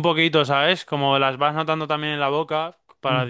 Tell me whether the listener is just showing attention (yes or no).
yes